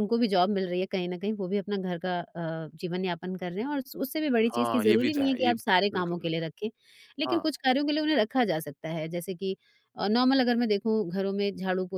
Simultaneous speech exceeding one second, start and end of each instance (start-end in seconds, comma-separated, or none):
4.5-6.3